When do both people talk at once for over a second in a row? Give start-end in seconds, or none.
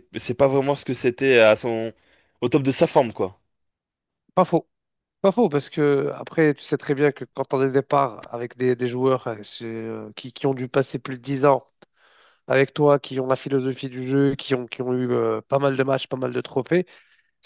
none